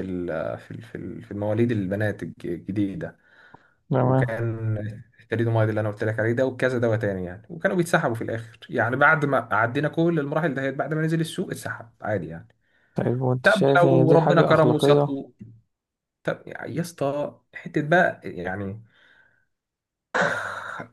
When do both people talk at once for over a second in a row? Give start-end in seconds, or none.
13.4-15.2